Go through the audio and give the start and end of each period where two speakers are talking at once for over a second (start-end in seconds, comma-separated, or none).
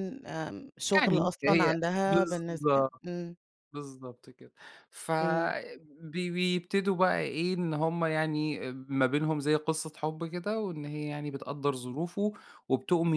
0.9-3.0